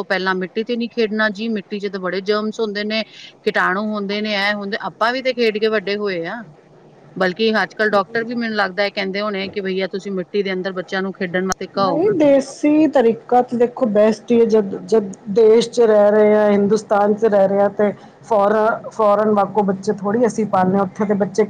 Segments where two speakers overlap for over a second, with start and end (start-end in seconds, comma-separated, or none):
none